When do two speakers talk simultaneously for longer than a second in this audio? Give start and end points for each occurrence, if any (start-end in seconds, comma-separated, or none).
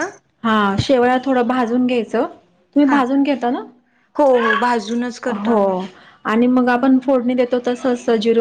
none